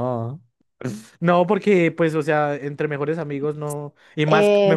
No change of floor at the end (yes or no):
yes